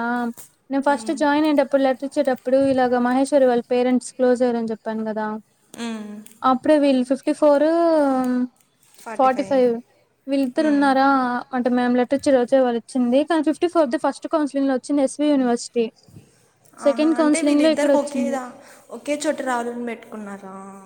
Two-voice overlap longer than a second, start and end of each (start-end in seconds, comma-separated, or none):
16.9-18.4